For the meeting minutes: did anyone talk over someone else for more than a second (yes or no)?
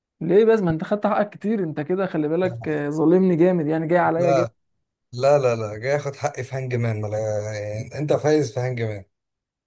no